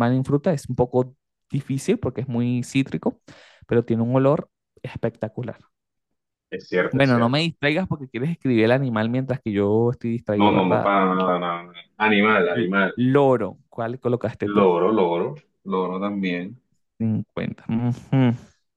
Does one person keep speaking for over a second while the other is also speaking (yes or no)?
no